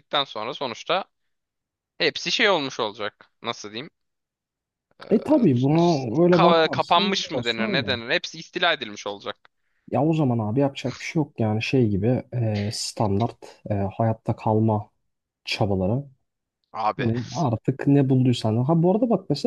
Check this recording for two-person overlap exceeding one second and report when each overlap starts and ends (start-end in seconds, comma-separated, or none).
6.3-8.0